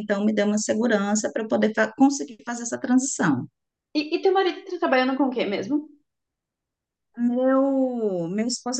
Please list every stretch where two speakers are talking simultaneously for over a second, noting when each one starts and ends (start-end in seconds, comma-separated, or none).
none